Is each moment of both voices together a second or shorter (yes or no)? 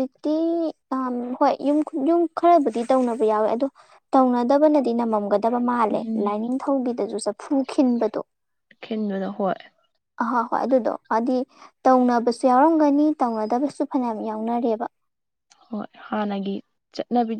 yes